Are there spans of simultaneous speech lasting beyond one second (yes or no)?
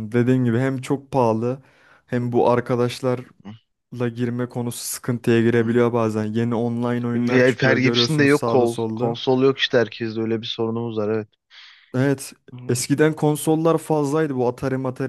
yes